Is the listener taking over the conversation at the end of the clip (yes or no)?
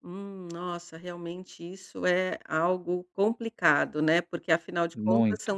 no